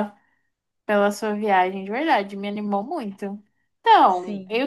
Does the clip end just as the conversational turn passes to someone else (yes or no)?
no